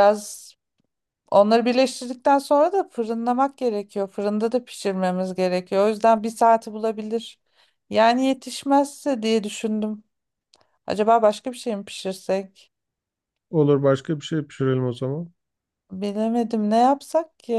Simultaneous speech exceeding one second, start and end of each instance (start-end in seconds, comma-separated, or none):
none